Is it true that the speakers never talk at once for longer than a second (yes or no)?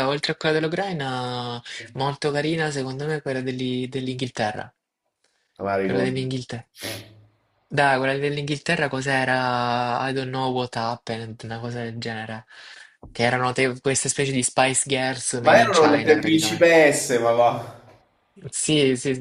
no